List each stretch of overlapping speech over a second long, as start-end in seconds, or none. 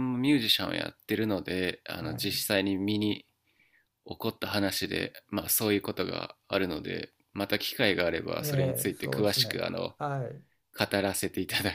8.4-9.9